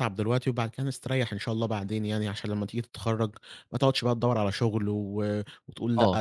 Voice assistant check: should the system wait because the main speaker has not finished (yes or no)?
no